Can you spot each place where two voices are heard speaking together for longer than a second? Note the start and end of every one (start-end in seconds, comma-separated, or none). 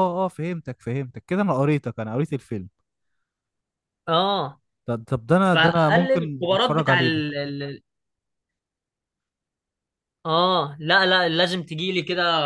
5.4-7.2